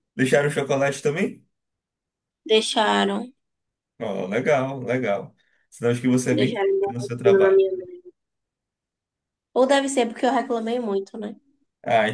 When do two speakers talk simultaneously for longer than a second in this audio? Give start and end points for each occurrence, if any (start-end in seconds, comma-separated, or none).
6.3-7.6